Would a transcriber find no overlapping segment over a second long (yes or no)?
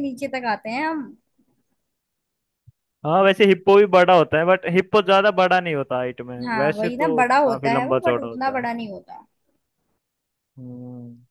no